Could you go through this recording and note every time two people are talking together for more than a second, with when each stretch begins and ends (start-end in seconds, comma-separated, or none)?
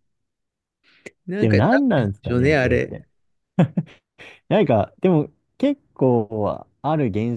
1.4-3.0